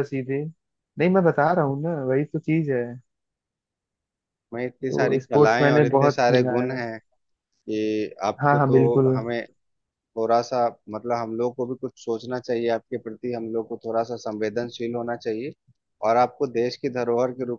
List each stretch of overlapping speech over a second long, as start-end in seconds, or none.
4.9-6.8